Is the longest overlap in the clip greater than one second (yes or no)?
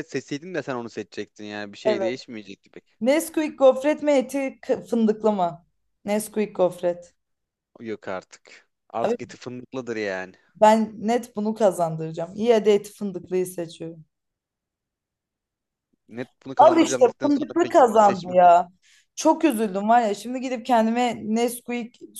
yes